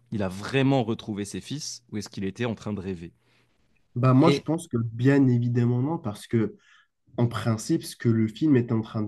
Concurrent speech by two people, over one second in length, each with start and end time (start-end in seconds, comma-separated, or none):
none